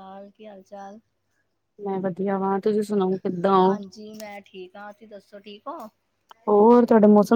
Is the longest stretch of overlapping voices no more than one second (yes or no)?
yes